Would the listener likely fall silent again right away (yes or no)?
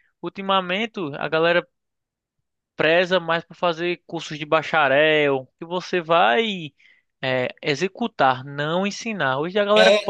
no